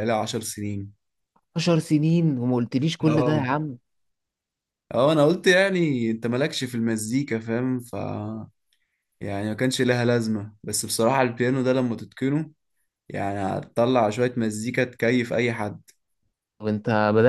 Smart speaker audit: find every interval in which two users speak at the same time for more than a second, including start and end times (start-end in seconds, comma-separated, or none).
none